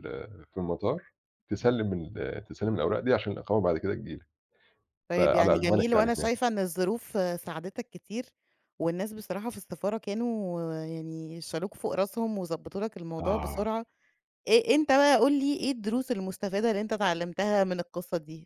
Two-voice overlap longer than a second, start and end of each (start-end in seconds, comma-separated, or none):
5.1-6.3